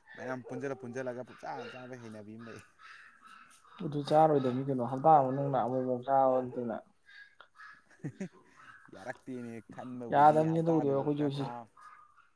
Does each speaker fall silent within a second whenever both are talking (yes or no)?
no